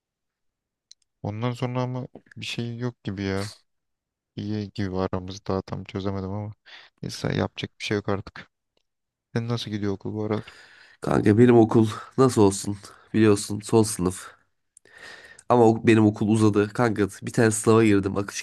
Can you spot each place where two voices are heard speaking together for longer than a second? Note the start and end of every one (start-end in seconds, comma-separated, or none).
none